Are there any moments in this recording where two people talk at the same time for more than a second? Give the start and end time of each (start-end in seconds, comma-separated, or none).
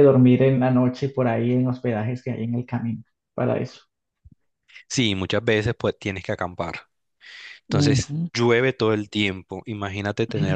none